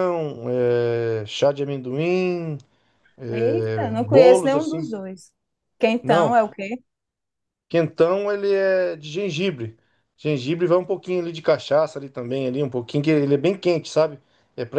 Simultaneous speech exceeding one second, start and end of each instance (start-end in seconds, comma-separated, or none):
3.3-4.9